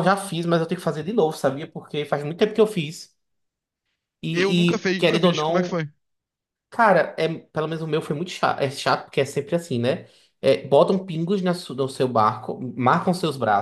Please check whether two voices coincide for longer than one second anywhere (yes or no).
yes